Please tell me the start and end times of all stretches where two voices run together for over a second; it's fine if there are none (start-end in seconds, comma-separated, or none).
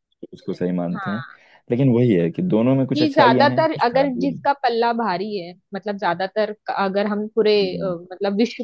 3.0-4.5